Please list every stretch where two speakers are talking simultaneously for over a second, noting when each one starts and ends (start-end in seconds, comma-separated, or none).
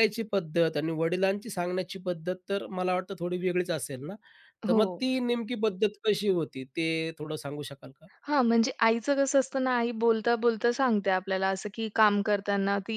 none